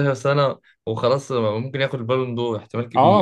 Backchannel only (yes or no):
no